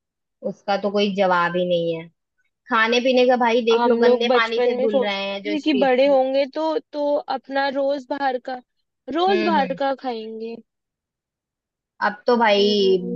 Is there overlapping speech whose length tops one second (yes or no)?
yes